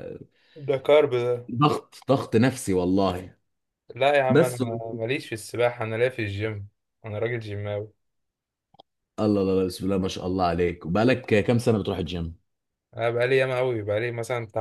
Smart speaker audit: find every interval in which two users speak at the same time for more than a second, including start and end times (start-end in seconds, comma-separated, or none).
none